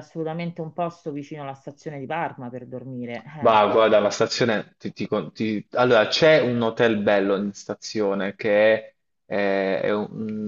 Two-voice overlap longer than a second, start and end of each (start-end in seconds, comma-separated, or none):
none